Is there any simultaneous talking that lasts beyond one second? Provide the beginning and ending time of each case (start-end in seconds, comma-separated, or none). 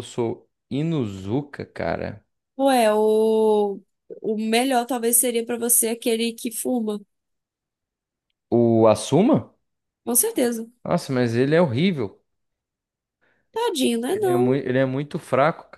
none